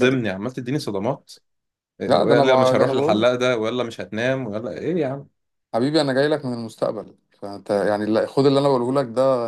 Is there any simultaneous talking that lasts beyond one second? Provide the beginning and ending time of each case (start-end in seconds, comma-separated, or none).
2.1-3.3